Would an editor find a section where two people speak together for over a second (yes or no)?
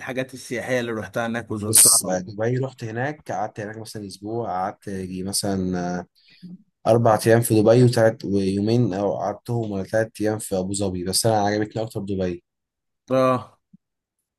no